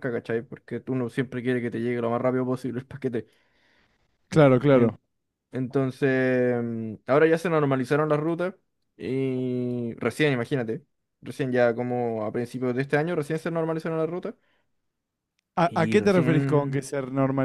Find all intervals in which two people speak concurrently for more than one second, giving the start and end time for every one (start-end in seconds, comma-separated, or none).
15.6-16.9